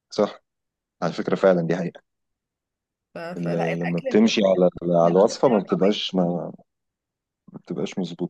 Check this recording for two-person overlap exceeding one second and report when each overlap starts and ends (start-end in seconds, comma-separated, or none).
3.4-5.9